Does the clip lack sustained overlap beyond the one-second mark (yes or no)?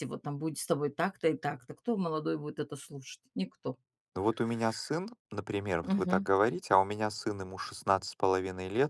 yes